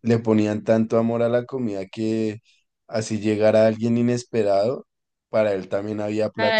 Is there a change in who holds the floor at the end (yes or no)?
yes